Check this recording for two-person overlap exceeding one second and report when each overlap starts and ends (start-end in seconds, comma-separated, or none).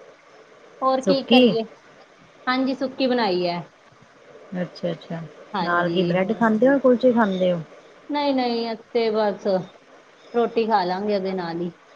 none